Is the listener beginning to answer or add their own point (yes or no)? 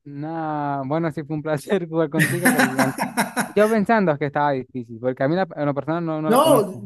yes